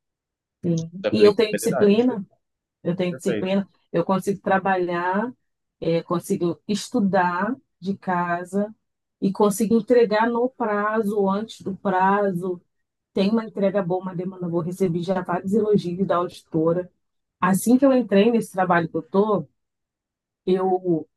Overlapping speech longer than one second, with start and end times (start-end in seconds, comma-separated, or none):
0.8-2.1